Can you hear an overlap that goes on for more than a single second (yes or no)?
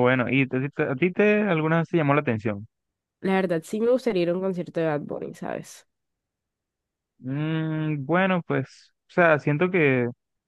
no